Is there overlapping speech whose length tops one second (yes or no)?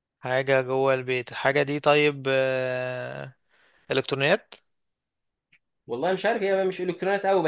no